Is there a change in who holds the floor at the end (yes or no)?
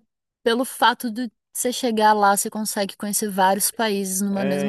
yes